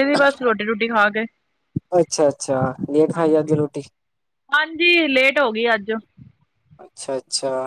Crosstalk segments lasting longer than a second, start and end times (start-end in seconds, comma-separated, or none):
none